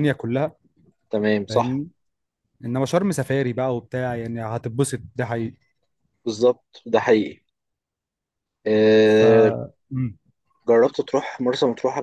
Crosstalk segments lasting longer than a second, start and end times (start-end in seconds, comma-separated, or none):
none